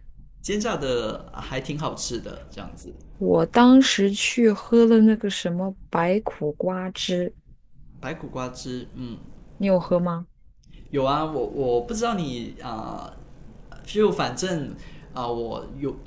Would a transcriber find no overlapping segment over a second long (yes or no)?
yes